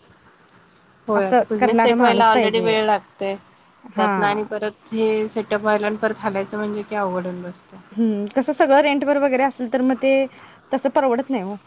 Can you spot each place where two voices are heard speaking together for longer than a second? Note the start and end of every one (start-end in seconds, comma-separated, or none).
1.1-2.8